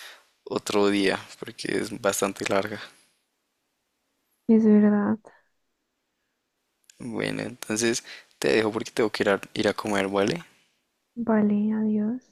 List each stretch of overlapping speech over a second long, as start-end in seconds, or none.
none